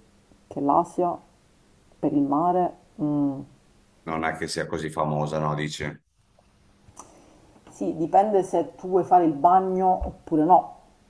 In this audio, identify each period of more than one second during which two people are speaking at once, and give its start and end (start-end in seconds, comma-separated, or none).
none